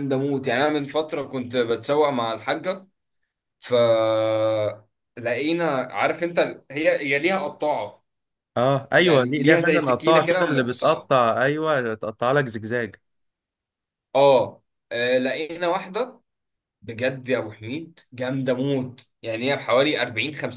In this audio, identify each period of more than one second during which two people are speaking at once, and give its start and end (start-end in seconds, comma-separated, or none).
9.0-11.1